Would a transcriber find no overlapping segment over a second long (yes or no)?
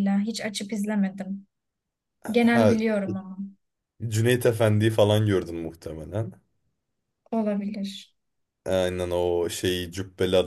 yes